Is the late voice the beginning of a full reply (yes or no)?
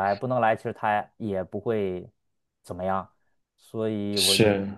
no